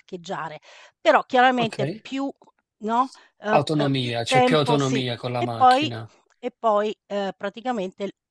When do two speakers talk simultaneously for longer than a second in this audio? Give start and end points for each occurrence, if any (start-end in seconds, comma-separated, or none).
3.5-5.9